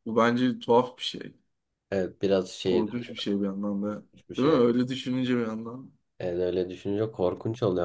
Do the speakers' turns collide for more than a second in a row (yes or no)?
no